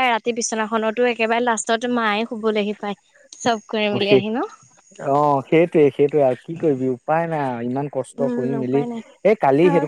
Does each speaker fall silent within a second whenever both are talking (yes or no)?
yes